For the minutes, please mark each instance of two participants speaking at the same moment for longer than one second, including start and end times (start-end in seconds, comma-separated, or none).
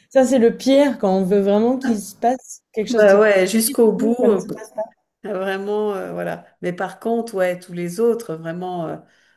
2.9-4.4